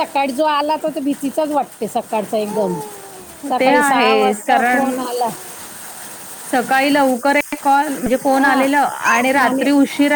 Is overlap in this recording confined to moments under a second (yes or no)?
no